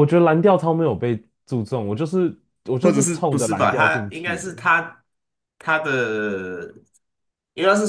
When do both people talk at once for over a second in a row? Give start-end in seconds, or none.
2.8-4.5